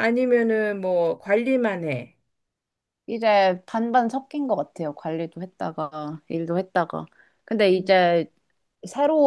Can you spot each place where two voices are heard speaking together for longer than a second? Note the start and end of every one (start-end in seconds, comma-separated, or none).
none